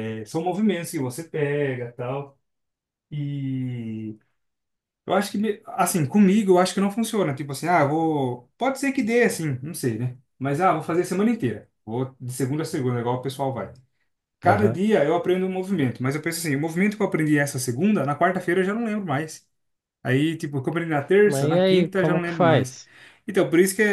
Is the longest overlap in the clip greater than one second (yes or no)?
yes